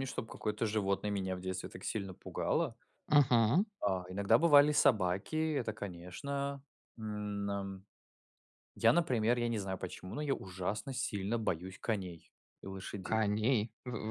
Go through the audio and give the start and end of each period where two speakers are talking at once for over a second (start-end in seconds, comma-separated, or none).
none